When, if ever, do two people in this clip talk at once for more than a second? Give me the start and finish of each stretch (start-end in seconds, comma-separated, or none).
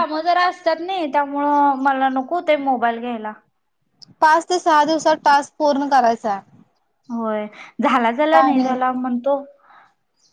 none